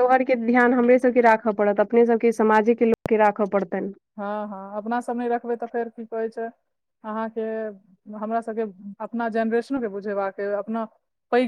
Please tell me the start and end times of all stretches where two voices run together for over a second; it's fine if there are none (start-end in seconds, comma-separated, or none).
none